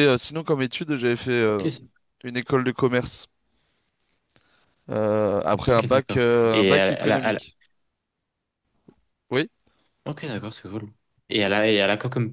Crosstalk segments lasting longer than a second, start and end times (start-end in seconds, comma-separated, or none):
5.7-7.4